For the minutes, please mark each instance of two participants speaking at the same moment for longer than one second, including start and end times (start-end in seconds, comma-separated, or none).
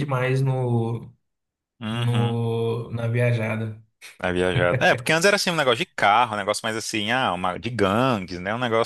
none